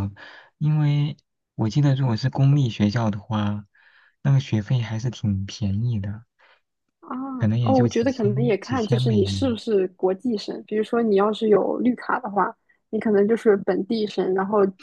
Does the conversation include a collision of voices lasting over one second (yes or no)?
yes